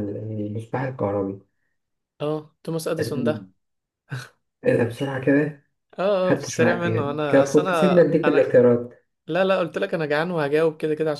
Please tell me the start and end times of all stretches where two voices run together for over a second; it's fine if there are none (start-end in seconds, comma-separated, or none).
6.2-8.5